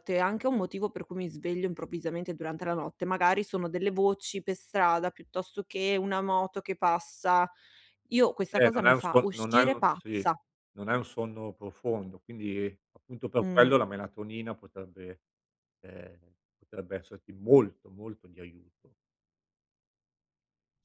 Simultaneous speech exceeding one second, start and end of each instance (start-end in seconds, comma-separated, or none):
8.5-10.2